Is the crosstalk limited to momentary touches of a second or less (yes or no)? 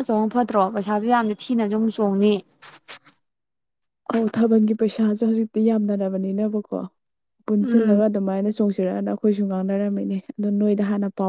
yes